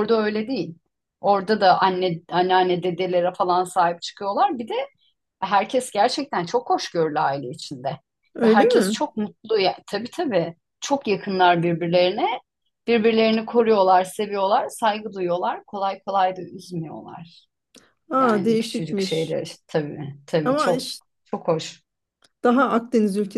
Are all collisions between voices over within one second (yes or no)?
no